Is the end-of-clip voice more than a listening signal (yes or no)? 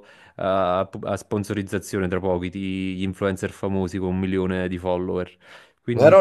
yes